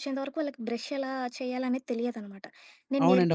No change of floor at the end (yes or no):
yes